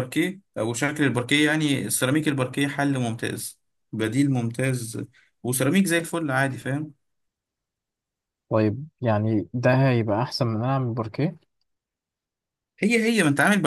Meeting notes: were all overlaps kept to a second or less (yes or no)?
yes